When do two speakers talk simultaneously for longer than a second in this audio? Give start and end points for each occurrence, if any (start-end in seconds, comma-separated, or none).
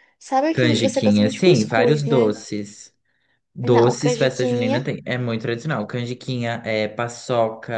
0.5-2.3, 3.6-4.9